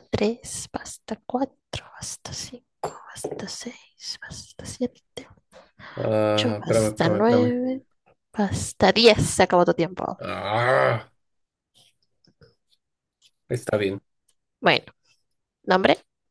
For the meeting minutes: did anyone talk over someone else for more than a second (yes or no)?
yes